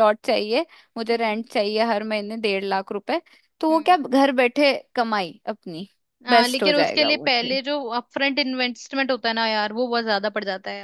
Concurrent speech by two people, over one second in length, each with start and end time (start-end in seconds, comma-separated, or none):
6.3-7.6